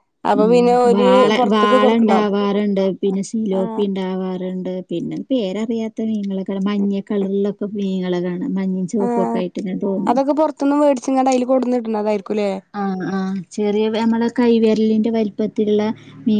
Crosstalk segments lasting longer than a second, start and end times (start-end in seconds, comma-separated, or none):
none